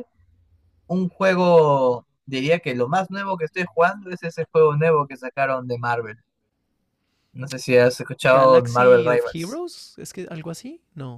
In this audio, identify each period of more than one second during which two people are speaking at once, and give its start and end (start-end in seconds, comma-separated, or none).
8.3-9.6